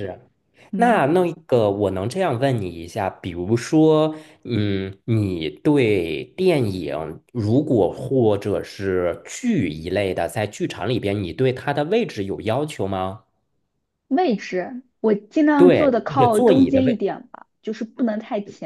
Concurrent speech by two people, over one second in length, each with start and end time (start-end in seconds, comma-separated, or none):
15.6-17.0